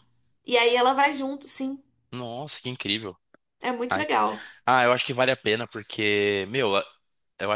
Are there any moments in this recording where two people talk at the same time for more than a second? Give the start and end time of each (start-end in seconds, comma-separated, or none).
none